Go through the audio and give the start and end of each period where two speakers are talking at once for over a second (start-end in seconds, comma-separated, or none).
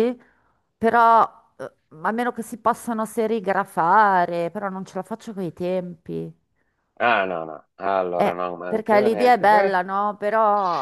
8.2-9.8